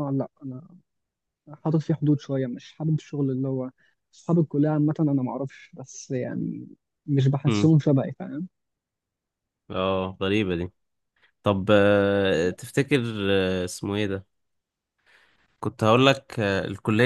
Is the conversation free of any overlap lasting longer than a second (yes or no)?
yes